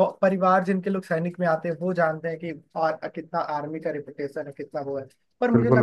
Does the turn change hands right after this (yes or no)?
no